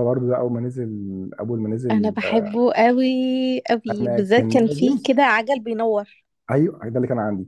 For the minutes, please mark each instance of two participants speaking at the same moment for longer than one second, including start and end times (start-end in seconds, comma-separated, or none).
3.9-5.1